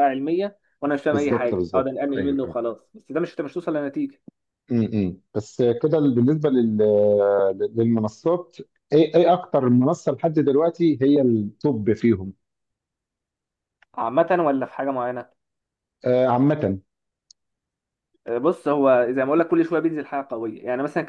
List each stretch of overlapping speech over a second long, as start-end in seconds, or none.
1.1-2.5